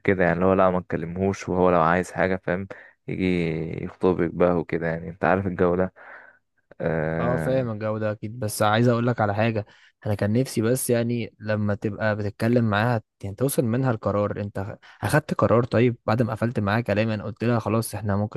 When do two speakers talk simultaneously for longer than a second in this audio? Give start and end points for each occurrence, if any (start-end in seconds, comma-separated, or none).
none